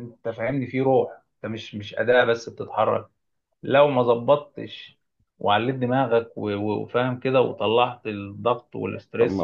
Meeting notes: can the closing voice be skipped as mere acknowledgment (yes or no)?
no